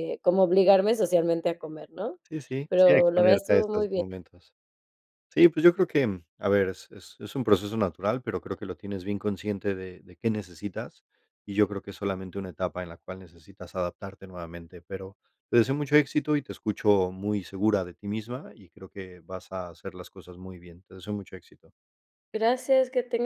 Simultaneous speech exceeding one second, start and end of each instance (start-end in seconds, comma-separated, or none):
2.7-4.0